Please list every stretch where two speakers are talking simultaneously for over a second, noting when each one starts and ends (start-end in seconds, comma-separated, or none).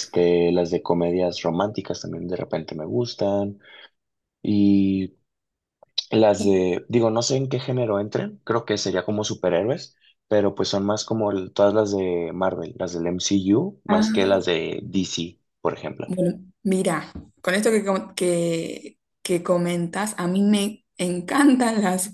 none